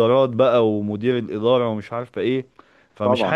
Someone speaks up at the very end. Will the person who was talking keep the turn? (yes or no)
yes